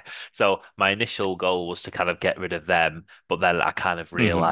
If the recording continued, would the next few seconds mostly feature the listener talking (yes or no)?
no